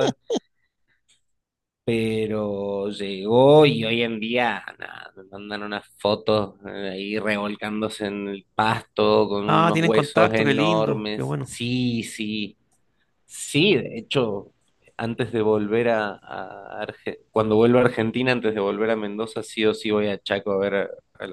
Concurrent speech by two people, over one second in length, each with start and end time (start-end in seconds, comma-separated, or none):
9.4-11.5